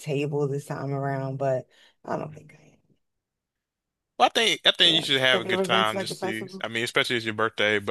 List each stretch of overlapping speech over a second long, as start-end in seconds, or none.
4.8-6.7